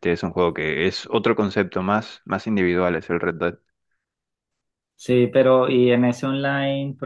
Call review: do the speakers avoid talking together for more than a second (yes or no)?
yes